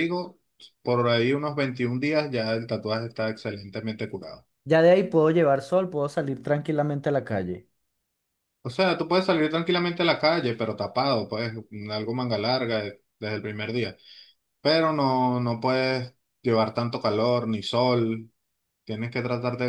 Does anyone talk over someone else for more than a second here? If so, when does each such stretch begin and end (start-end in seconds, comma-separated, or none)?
none